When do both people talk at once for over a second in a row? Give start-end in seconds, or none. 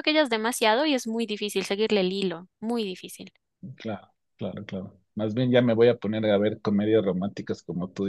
none